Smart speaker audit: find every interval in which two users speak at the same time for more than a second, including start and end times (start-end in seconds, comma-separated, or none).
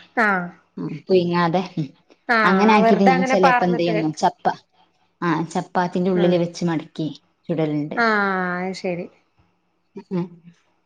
2.5-4.0